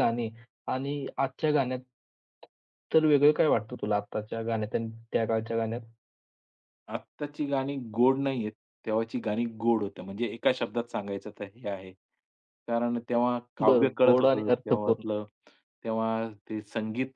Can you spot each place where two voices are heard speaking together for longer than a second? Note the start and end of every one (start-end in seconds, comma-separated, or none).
13.7-15.0